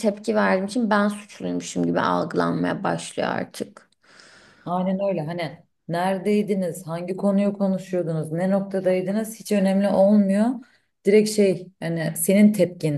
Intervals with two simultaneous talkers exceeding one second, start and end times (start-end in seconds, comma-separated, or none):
none